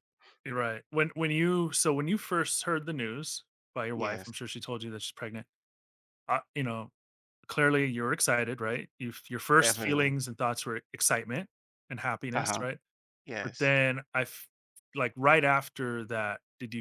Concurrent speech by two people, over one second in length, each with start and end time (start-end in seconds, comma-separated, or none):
none